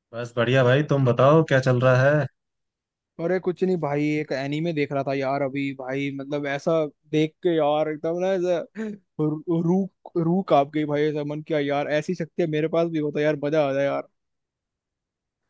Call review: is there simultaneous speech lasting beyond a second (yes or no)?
no